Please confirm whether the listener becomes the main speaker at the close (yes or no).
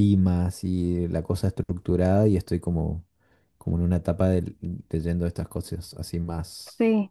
yes